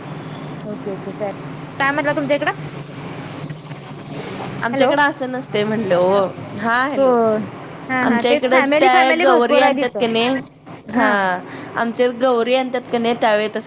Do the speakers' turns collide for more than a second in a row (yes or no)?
yes